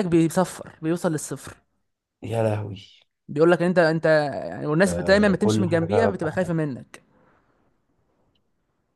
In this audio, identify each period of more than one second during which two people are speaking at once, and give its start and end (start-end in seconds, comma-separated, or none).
4.9-6.5